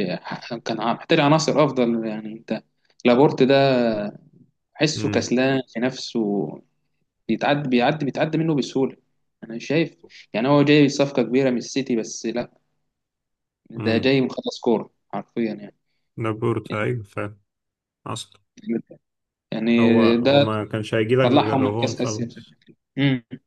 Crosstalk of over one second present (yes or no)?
yes